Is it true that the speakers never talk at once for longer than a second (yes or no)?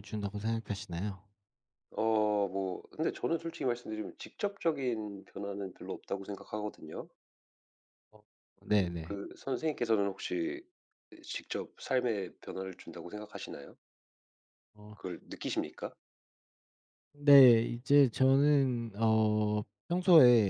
yes